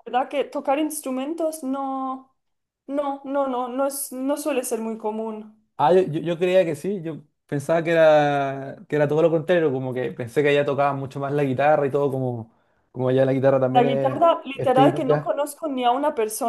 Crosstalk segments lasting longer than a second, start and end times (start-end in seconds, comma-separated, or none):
13.8-15.3